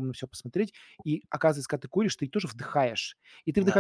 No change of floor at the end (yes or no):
yes